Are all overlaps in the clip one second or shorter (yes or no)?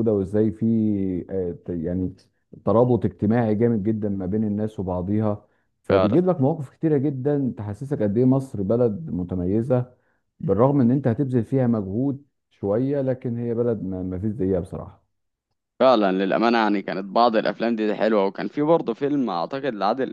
yes